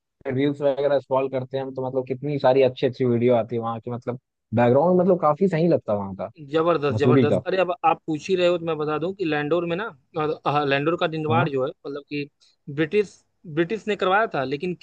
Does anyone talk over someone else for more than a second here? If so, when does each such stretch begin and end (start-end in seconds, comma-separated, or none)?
none